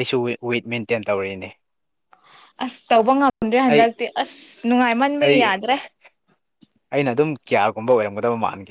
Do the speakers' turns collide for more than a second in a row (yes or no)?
no